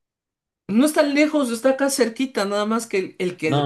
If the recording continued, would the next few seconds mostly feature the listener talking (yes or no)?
yes